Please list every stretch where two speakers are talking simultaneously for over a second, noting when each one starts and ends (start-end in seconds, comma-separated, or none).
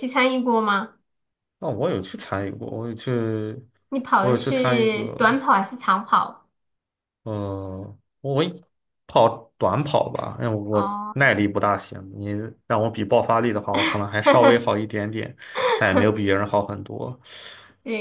4.2-5.4